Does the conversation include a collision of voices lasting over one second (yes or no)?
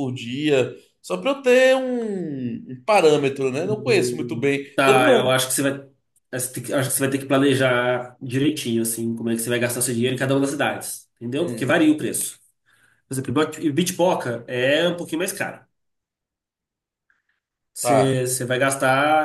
yes